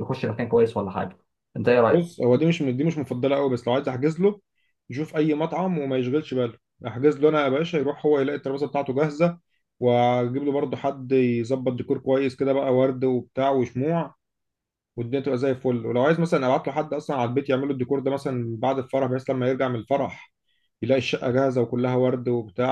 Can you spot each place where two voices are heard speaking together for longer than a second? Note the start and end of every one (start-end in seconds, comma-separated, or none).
none